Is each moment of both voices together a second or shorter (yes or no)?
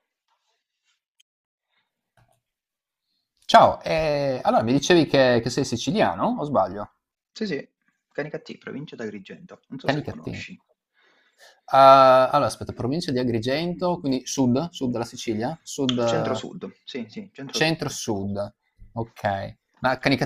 yes